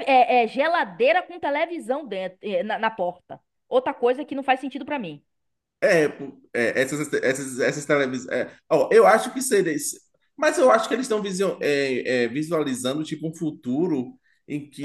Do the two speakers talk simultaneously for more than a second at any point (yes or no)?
no